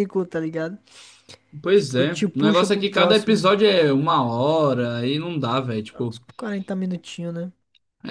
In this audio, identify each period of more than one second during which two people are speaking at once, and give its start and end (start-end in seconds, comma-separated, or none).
1.7-3.5